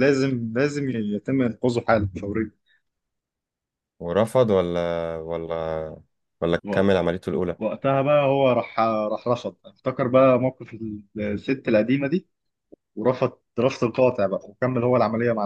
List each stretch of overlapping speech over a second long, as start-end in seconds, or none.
none